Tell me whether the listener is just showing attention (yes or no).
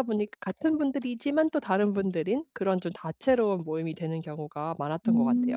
no